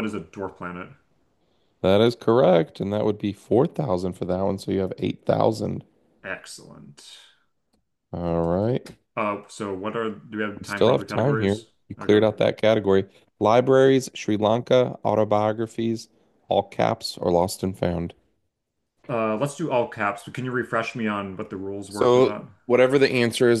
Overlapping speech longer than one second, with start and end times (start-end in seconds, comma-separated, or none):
10.6-12.2